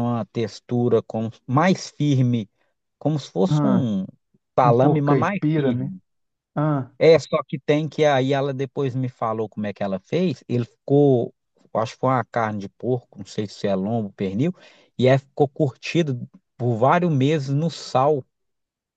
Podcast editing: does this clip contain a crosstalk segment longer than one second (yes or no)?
yes